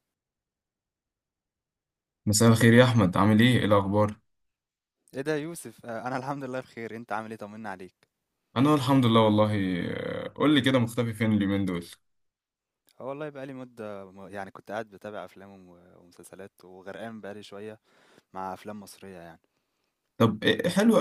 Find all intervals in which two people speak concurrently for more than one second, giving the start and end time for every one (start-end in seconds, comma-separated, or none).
none